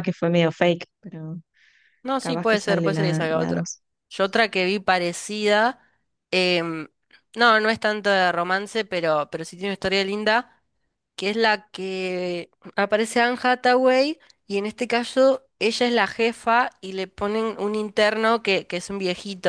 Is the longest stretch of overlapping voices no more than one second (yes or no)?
no